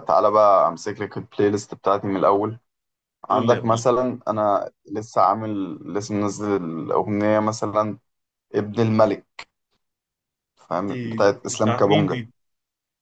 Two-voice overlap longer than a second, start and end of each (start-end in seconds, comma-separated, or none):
10.9-12.2